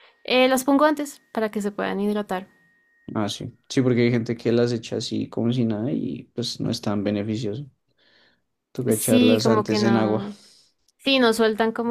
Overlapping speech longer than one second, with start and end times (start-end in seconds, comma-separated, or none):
8.9-10.2